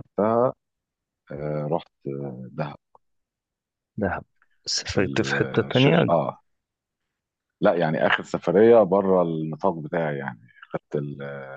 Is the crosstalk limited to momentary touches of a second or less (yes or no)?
no